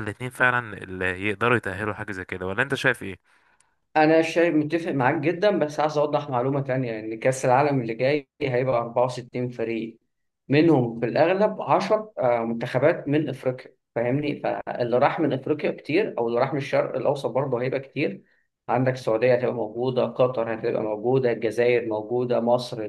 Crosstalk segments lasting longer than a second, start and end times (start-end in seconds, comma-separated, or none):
none